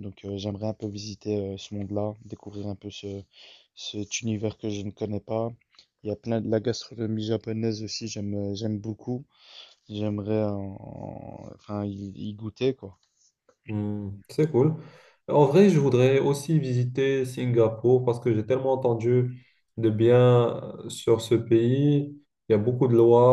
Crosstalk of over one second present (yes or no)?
no